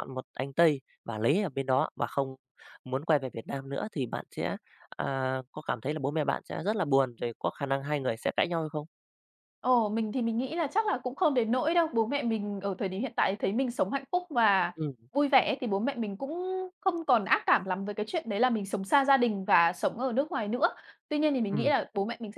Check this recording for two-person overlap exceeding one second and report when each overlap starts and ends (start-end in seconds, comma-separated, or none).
none